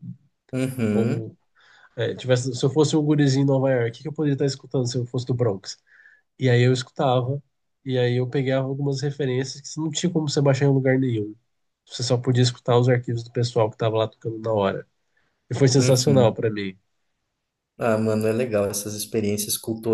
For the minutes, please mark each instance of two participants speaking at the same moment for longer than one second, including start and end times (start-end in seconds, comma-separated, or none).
none